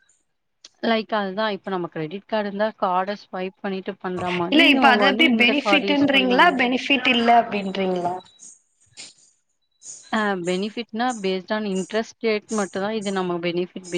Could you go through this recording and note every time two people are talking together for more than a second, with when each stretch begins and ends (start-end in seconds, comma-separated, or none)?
4.5-6.5